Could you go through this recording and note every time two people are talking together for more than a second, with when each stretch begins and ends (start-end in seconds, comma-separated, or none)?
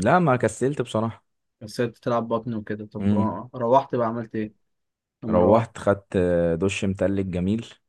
none